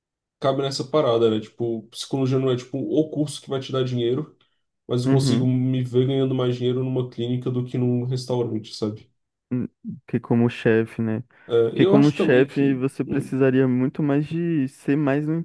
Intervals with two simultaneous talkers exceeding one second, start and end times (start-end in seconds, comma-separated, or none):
11.7-13.3